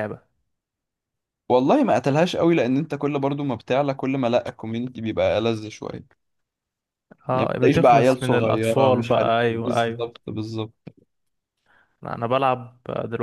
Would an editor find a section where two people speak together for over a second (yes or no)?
yes